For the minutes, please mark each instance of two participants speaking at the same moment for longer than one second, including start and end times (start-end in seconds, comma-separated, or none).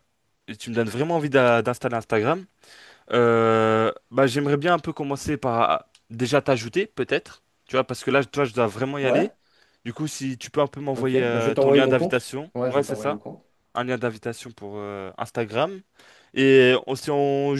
10.9-13.2